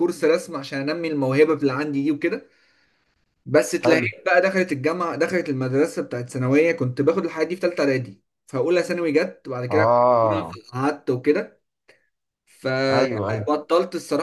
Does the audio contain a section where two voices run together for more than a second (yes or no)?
no